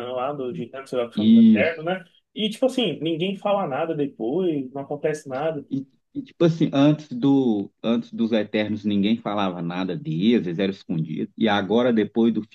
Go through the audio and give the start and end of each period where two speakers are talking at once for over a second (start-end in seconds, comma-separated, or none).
none